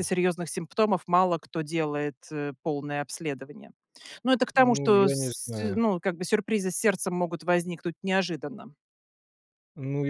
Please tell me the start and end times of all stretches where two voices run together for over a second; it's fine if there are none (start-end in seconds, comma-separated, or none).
4.5-5.8